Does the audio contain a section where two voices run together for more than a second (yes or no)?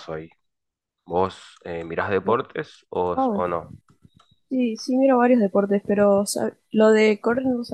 no